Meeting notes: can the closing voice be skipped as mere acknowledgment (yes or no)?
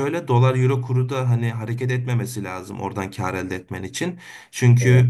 yes